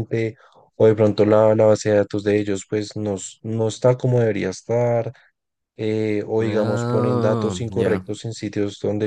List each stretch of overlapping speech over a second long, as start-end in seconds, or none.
6.4-8.1